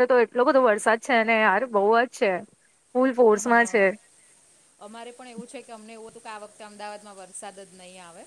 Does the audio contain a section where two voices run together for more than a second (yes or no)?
no